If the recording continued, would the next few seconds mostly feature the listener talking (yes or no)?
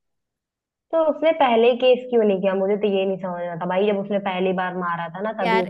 yes